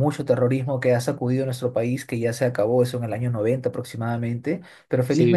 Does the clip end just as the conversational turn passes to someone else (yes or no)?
yes